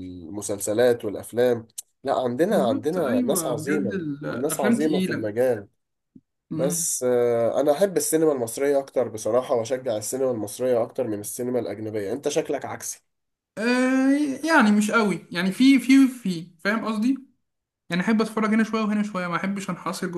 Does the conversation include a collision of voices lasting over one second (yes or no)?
yes